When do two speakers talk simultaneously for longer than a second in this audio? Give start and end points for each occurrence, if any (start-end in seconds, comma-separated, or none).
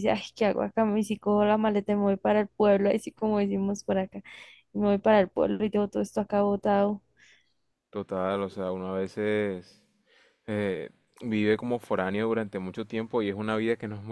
none